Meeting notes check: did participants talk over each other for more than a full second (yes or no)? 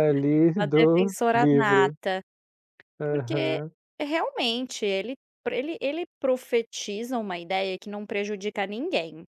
yes